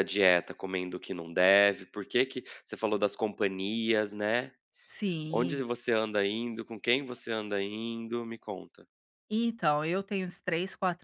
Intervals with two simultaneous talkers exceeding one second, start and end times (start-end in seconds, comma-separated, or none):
none